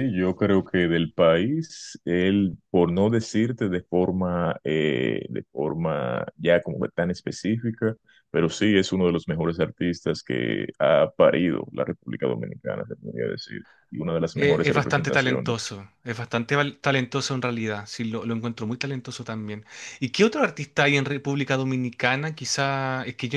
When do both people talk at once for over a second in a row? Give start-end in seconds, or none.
14.3-15.7